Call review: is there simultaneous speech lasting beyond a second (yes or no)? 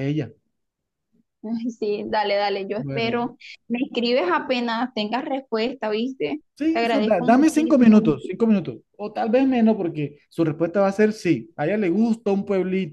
yes